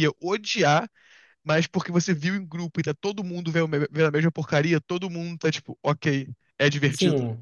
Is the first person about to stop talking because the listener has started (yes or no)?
yes